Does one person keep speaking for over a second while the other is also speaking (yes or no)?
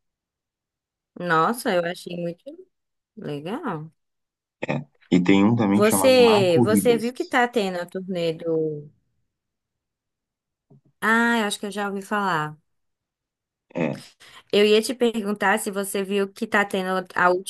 yes